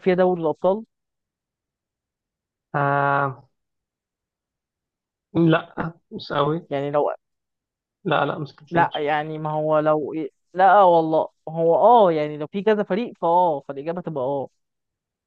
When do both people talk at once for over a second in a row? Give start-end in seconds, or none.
none